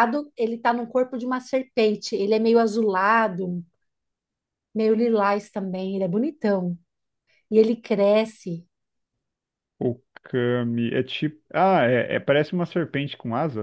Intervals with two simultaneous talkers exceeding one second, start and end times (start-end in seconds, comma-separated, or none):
none